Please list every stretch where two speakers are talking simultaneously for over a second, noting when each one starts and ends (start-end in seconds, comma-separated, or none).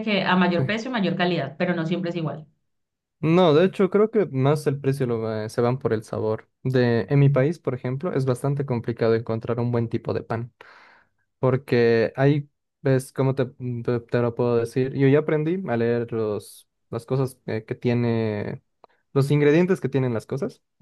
none